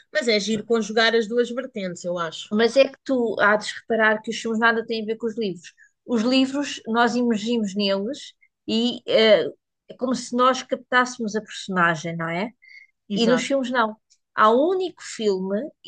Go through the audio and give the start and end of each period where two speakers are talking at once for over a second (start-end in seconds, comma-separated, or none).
none